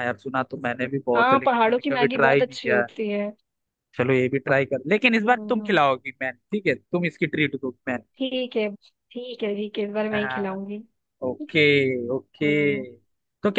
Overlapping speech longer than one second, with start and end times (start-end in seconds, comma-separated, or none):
1.1-2.9